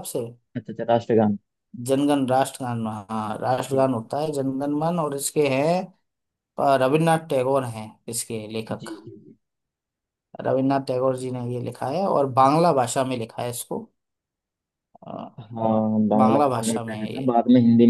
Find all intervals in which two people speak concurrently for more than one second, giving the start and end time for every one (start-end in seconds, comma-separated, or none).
16.2-17.4